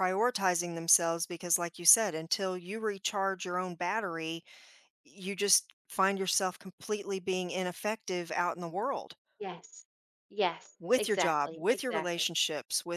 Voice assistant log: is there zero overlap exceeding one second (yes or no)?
no